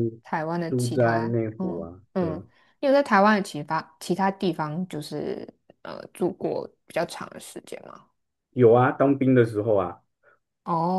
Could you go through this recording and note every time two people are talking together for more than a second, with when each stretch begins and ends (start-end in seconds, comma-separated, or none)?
0.7-2.4